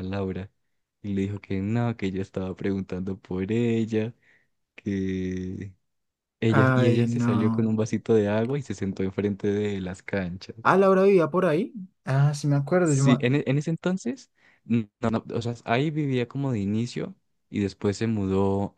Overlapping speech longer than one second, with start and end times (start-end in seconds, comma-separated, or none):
6.5-7.7